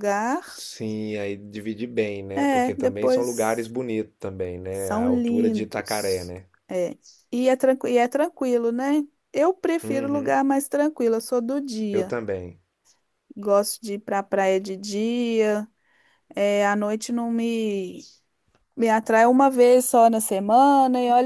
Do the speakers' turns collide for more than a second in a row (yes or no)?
yes